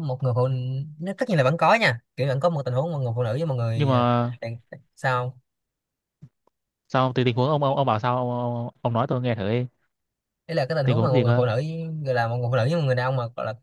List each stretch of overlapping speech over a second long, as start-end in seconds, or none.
none